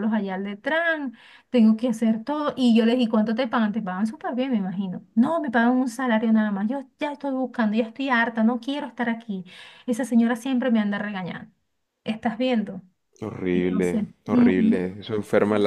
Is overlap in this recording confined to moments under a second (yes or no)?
no